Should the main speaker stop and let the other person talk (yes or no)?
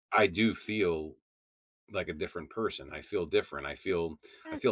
yes